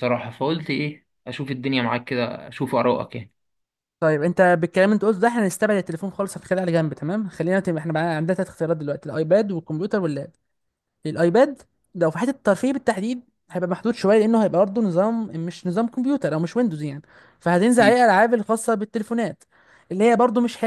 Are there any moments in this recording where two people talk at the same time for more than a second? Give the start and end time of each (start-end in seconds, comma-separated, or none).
none